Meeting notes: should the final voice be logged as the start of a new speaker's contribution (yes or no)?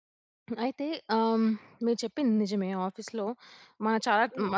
no